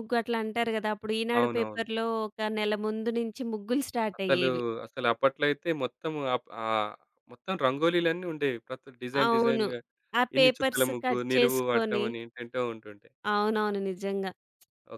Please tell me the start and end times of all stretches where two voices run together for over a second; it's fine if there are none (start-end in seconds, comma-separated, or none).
10.4-12.1